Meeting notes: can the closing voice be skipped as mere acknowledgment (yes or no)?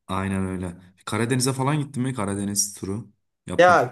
no